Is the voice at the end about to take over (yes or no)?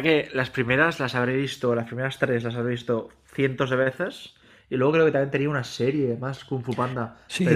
yes